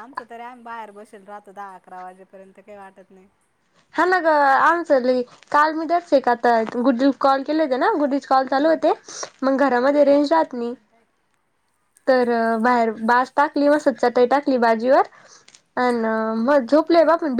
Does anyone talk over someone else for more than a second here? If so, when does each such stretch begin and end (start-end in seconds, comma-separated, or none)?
none